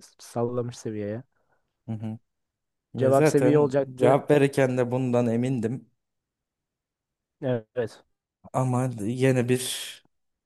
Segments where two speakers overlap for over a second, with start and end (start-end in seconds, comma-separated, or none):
3.0-4.2